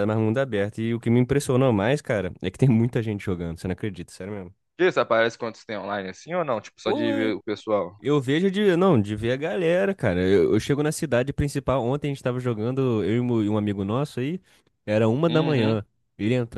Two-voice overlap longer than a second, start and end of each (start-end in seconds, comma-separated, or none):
none